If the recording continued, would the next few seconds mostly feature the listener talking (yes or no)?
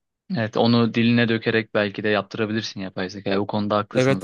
yes